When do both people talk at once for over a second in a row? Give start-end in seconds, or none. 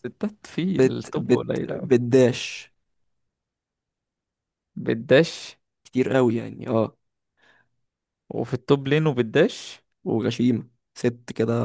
0.6-1.9